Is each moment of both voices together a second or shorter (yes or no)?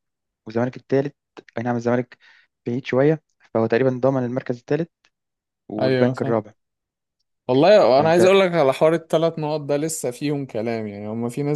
yes